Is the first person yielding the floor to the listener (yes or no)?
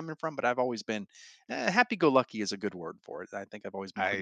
yes